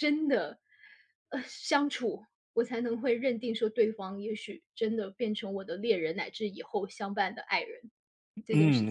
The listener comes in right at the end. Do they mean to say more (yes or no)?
yes